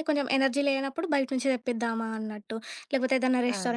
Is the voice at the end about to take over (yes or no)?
no